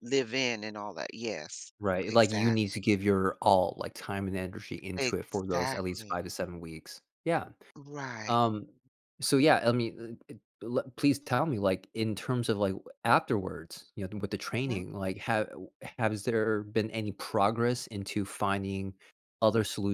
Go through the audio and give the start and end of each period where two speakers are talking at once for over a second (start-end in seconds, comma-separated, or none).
5.0-6.2